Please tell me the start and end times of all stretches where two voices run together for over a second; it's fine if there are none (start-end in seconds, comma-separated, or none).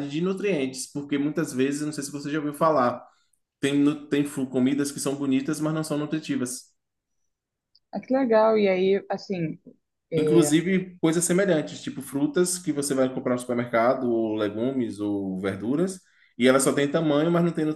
none